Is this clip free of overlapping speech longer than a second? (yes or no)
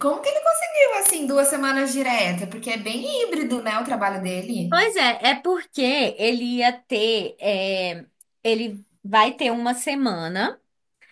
yes